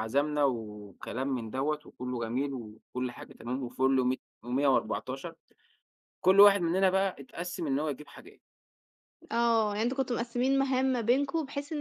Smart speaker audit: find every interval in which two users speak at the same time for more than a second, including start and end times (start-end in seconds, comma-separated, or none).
none